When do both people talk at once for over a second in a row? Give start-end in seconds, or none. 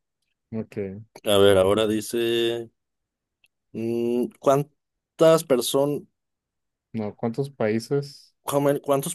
none